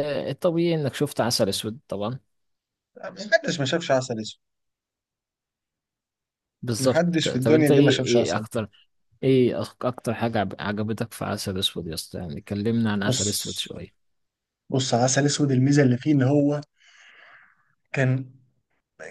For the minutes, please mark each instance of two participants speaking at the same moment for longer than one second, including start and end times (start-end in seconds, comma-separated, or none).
6.8-8.5